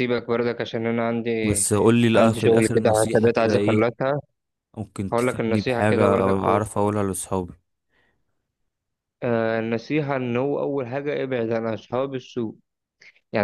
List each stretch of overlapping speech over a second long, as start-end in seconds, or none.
2.1-3.9, 5.1-6.6